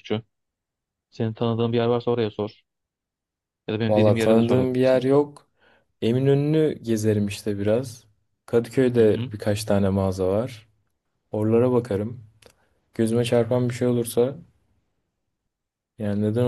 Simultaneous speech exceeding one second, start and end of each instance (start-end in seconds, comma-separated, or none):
3.9-5.1